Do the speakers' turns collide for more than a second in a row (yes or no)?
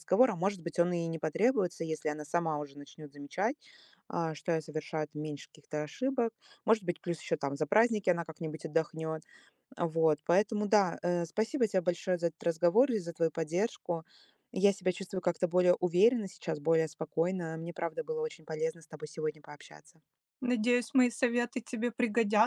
no